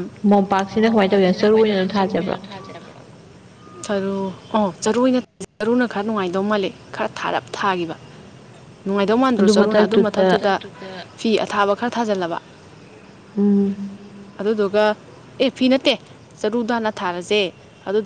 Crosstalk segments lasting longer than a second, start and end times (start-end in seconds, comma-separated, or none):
0.8-2.4